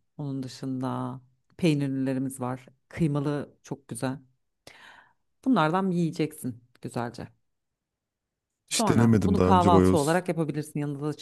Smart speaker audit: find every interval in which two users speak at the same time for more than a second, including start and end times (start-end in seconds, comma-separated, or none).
8.7-10.2